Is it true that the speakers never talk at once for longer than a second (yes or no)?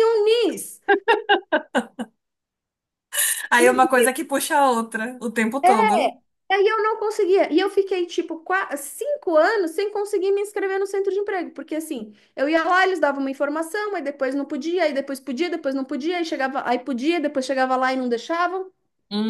yes